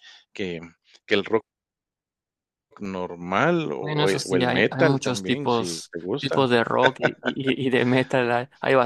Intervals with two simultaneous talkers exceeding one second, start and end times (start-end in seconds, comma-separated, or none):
3.8-6.3